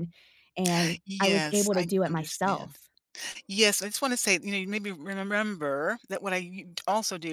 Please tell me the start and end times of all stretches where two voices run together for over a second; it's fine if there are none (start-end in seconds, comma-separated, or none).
1.1-2.8